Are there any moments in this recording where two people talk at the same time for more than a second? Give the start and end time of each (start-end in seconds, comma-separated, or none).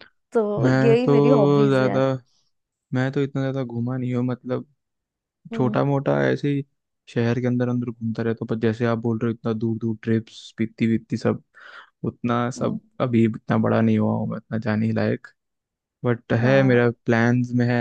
0.6-2.0